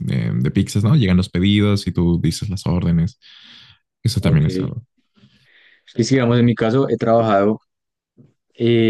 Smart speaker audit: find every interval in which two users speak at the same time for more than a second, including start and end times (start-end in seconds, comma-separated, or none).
none